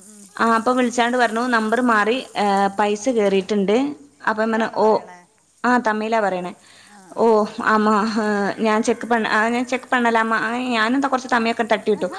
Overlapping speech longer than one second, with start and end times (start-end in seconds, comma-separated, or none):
none